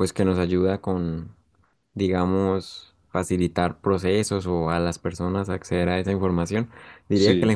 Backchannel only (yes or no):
yes